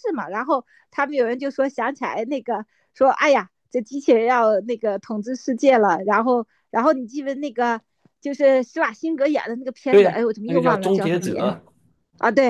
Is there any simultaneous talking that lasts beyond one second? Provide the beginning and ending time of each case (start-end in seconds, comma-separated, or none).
9.9-11.5